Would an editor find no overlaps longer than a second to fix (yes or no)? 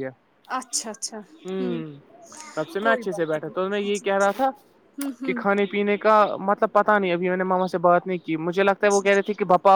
no